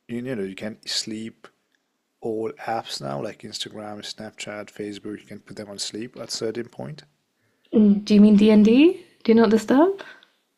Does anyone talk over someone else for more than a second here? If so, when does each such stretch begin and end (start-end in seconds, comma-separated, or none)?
none